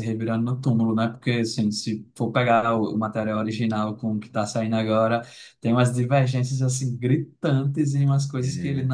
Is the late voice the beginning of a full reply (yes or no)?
no